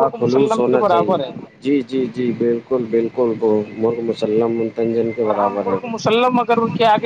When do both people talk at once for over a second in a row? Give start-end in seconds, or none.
none